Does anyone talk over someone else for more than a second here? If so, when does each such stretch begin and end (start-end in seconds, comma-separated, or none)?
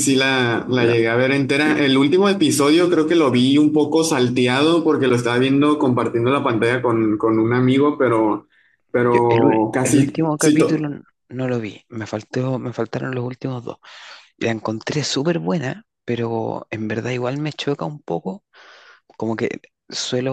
9.1-10.8